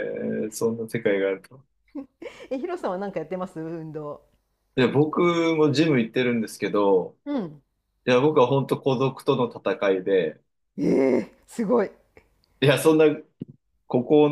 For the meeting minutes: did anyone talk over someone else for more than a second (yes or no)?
no